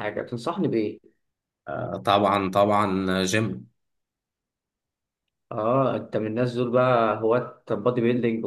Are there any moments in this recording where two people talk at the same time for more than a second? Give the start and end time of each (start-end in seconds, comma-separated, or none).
none